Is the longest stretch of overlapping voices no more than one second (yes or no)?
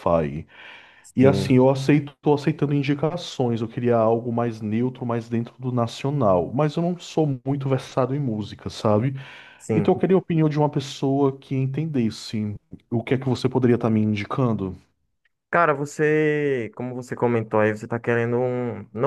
yes